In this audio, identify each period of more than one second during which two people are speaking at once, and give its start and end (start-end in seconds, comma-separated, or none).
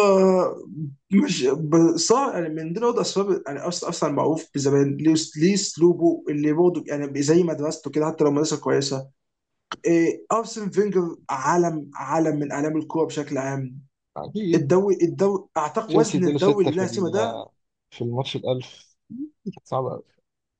15.9-17.4